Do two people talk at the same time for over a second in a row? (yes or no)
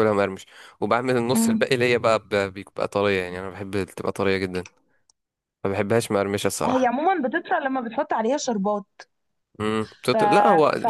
no